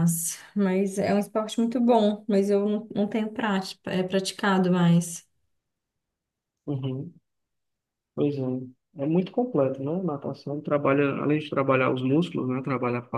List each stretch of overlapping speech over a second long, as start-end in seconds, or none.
none